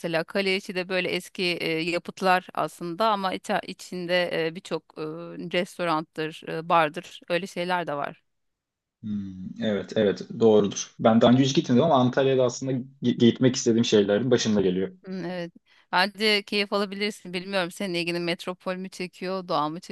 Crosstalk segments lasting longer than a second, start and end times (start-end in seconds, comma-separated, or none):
none